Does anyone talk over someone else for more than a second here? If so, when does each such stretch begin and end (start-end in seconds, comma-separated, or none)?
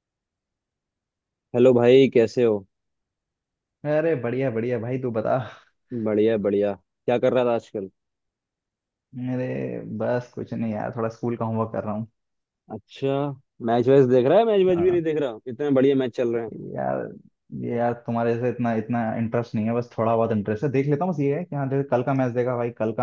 none